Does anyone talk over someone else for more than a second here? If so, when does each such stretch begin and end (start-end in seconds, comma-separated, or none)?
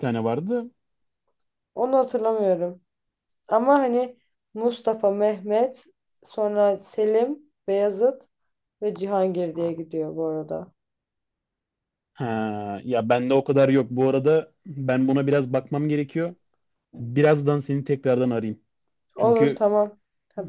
none